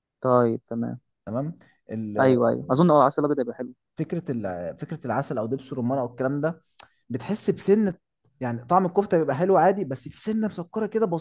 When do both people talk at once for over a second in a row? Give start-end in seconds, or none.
none